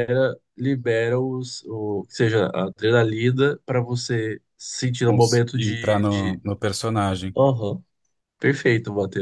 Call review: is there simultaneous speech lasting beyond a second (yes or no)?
yes